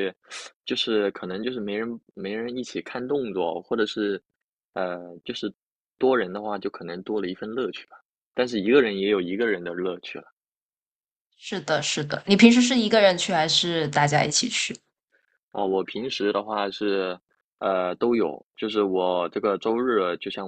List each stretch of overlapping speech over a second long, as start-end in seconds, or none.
none